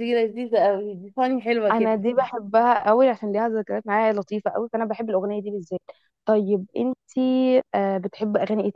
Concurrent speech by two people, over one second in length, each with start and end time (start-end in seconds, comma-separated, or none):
none